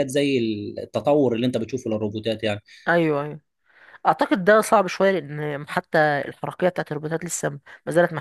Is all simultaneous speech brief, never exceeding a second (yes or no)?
yes